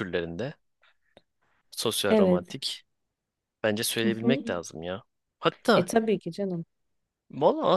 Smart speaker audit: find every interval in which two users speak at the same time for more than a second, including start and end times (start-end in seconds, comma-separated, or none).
none